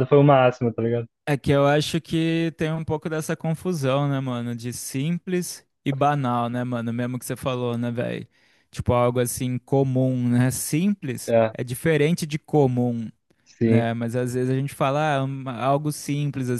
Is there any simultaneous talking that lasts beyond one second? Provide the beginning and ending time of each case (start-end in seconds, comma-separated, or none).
none